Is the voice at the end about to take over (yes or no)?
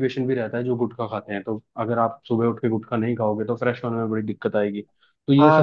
yes